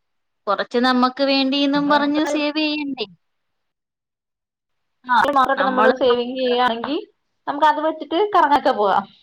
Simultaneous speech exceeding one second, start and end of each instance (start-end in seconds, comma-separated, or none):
none